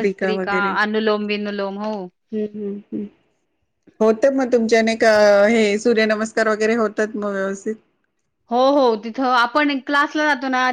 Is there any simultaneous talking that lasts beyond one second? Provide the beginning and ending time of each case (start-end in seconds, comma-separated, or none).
none